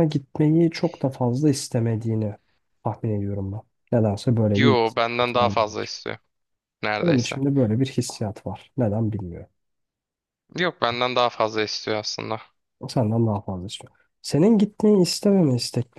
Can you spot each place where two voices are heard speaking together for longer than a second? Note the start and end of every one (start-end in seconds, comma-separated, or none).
4.5-5.9